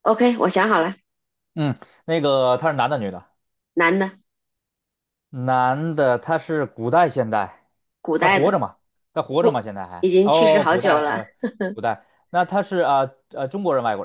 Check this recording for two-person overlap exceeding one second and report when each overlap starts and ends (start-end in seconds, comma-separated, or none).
10.0-11.2